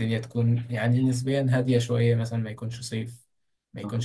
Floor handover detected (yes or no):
no